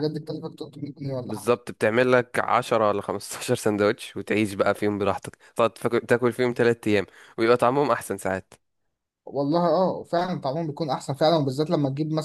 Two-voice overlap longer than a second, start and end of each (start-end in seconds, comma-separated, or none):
none